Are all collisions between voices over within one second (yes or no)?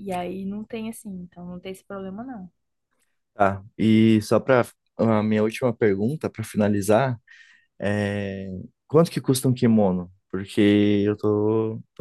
yes